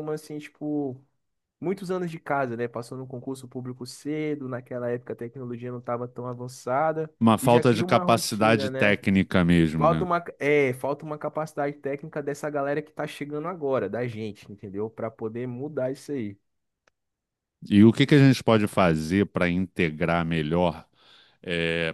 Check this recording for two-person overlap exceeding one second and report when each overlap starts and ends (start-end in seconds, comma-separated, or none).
7.2-9.0